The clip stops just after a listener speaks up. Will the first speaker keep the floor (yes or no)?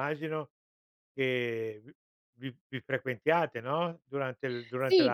no